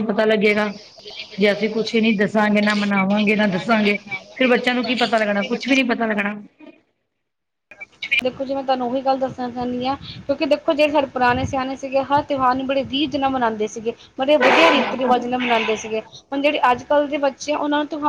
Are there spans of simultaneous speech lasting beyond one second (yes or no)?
no